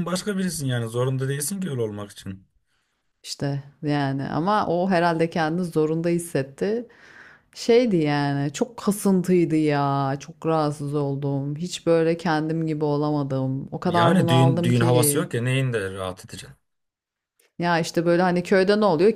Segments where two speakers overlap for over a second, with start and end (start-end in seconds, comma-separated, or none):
13.8-15.3